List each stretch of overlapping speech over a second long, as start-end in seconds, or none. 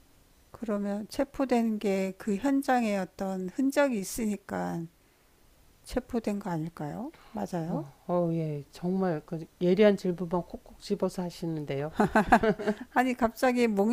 none